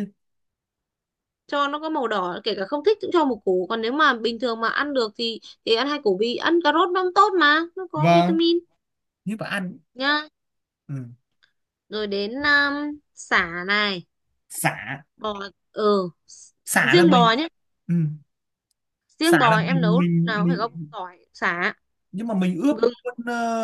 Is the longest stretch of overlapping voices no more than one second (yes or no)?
no